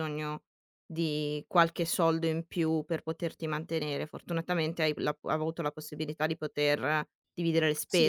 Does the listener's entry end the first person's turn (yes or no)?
yes